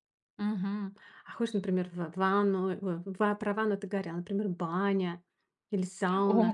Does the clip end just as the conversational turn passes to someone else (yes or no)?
yes